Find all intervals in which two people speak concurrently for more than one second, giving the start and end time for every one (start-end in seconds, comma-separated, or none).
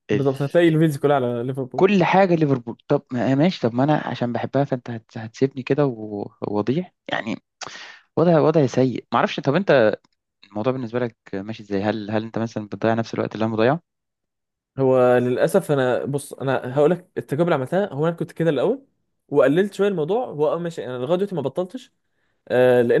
none